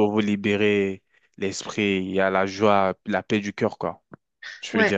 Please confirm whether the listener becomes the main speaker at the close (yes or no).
yes